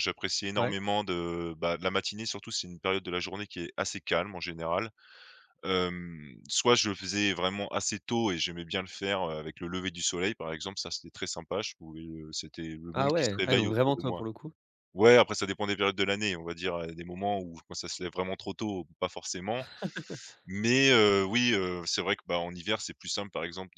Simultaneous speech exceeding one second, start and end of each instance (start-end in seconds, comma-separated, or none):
12.9-14.2